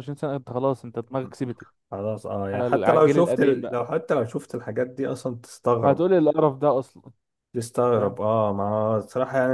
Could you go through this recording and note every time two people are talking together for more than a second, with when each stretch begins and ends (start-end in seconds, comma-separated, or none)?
2.5-3.8